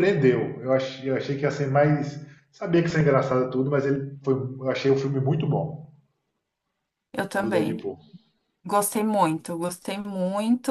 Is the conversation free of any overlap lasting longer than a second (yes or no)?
yes